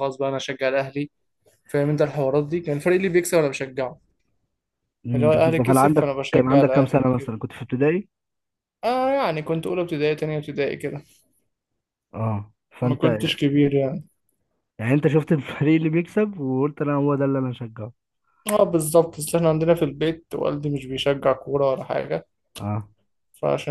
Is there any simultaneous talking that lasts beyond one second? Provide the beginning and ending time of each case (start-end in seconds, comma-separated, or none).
5.2-7.3